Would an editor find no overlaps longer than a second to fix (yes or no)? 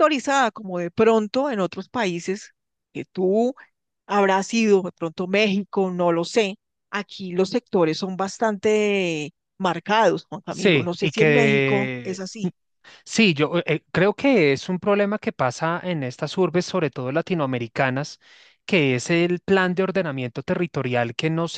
no